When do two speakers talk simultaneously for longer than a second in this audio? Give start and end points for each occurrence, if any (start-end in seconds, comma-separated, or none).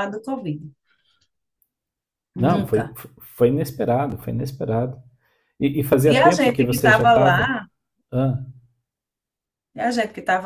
6.0-7.6